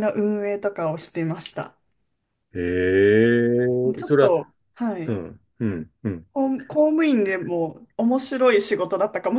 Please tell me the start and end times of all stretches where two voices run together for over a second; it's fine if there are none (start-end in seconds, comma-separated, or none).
none